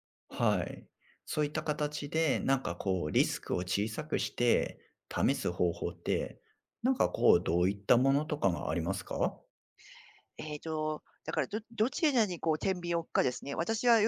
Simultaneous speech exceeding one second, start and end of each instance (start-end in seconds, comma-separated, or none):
none